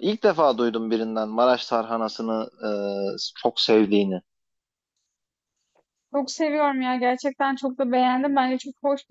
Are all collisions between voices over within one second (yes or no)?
yes